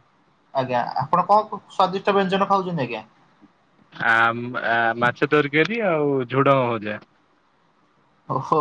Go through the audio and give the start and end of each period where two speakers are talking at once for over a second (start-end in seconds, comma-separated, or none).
none